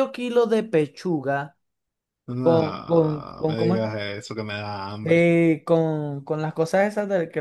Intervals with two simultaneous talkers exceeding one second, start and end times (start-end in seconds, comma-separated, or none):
2.4-3.8